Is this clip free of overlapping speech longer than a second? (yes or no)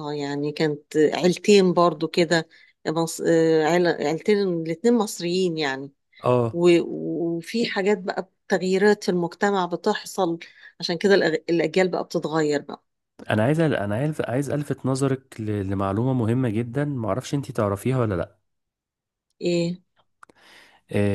yes